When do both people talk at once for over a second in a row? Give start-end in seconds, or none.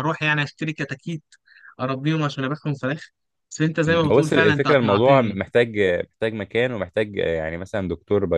3.9-5.4